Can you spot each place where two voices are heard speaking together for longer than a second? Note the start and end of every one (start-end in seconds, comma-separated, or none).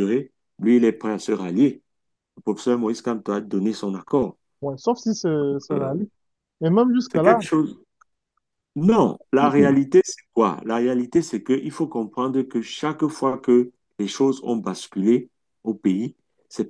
none